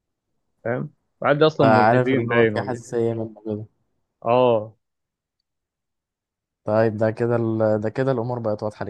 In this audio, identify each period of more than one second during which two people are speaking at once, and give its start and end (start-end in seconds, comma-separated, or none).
1.6-2.8